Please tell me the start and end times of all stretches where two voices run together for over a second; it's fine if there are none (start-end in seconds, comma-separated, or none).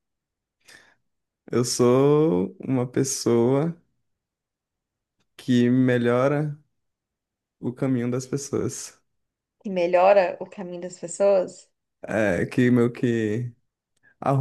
none